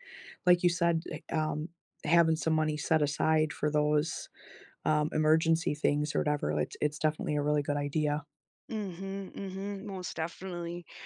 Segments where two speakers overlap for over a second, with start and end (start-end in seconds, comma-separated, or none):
none